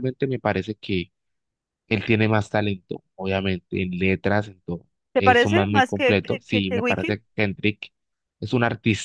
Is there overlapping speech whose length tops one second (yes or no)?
yes